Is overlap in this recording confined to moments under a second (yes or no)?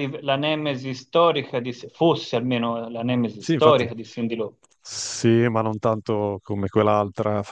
yes